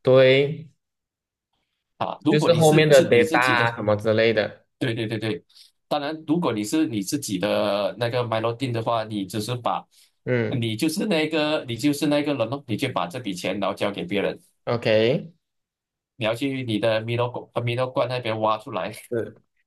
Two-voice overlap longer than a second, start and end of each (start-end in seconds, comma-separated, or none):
2.3-3.7